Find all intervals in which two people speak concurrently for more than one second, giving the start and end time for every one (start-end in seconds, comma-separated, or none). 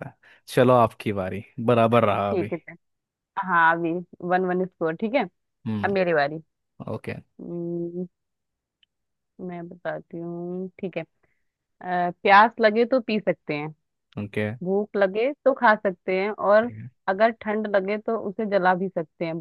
none